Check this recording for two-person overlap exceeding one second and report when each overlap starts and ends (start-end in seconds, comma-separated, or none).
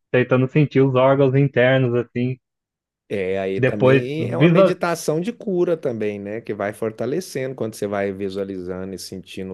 3.6-4.8